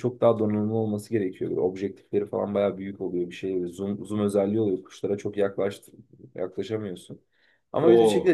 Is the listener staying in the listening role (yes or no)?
yes